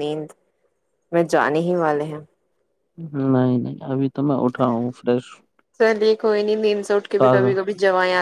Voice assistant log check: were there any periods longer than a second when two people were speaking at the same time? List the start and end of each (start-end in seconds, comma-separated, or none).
none